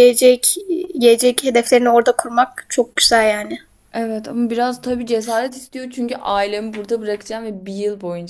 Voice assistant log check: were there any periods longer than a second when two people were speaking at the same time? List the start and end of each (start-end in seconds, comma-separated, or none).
none